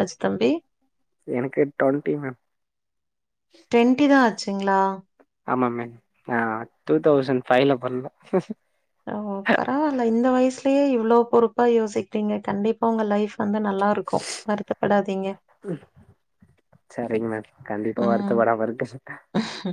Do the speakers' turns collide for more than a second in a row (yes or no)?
no